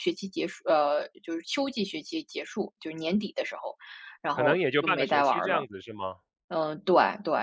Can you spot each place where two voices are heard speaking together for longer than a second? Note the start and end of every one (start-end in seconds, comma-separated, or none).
4.3-5.7